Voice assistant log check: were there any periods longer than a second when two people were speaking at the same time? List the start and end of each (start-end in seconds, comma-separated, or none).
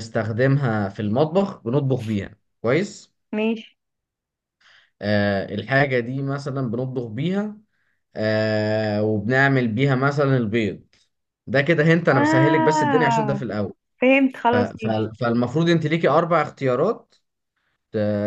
12.1-13.4